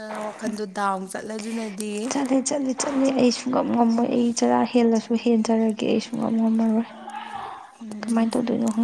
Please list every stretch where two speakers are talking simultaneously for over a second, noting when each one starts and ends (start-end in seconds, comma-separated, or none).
none